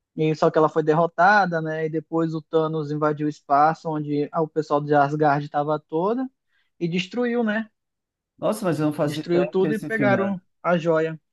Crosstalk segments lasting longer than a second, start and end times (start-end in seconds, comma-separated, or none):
9.0-10.4